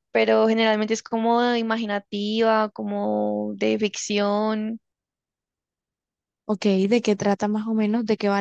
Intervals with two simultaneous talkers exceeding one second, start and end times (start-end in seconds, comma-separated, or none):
none